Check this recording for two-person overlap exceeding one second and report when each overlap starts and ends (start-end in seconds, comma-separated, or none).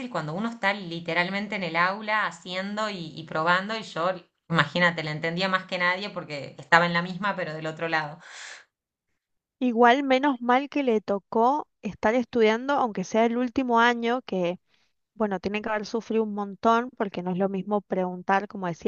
none